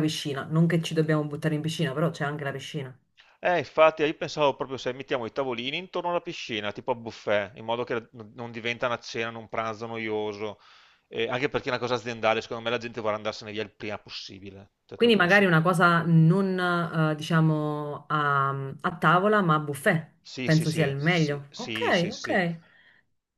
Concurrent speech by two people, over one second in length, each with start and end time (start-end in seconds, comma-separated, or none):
20.2-22.4